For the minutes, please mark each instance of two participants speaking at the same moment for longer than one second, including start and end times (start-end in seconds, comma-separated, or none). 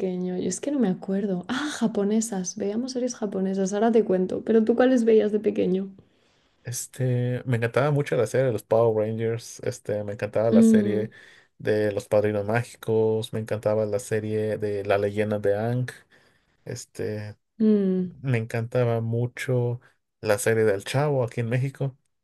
none